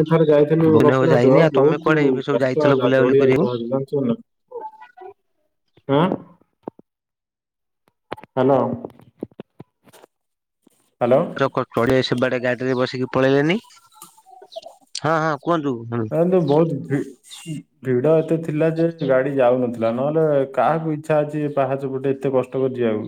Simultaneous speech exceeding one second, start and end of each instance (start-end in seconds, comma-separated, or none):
0.7-3.6